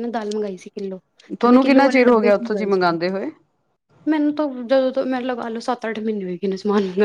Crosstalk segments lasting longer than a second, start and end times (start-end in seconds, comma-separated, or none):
1.4-3.0